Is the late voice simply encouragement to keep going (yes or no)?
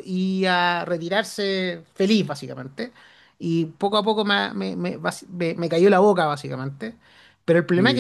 yes